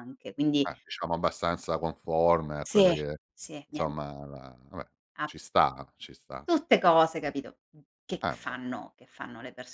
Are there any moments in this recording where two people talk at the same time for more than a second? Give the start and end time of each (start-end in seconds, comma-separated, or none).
none